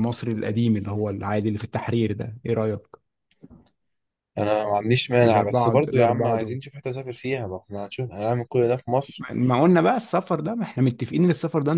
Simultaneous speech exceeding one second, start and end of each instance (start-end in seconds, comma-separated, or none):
5.2-6.6